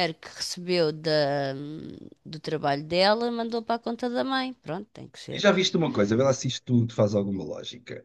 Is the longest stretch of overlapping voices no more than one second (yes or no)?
yes